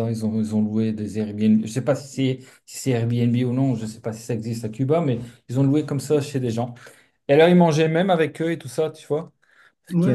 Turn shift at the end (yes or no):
yes